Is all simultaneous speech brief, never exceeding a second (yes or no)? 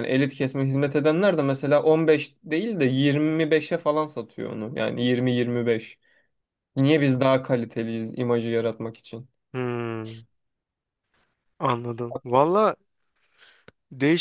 yes